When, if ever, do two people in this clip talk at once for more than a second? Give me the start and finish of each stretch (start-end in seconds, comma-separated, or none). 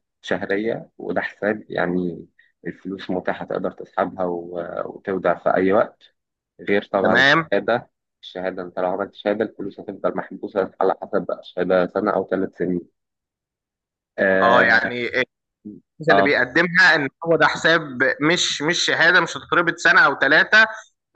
none